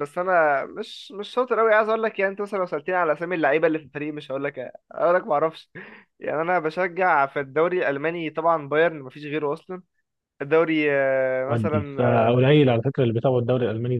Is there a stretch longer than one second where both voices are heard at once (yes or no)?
yes